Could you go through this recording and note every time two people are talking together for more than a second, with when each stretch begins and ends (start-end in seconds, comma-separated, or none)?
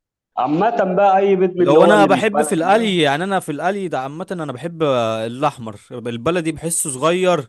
1.6-3.0